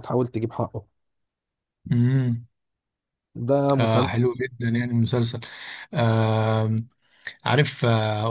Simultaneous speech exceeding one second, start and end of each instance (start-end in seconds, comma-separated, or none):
none